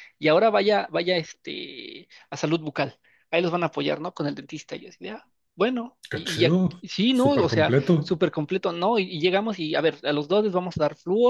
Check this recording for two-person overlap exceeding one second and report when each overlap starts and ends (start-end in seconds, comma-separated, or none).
6.1-8.1